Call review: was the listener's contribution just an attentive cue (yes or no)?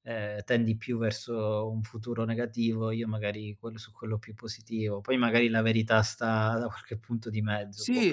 no